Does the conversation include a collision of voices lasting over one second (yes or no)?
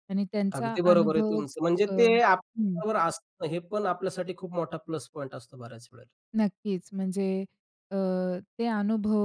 yes